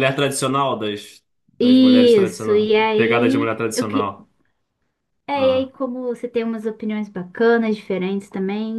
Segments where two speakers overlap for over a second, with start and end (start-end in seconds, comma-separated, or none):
1.6-4.1